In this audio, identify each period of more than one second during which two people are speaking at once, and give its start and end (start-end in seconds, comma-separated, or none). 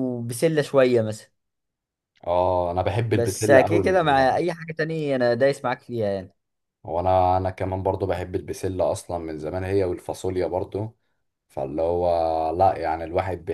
3.1-4.4